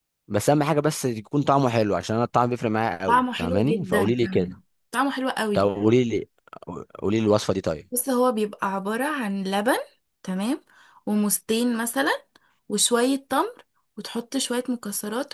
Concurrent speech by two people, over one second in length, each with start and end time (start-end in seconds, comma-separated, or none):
3.0-4.5